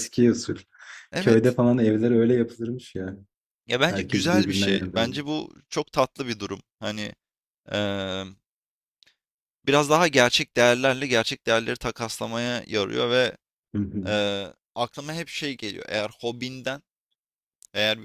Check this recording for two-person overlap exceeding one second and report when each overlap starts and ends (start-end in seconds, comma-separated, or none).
3.9-5.2